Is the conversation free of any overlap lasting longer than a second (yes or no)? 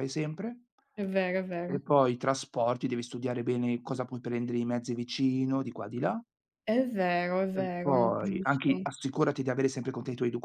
no